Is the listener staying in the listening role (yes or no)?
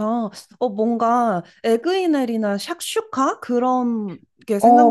no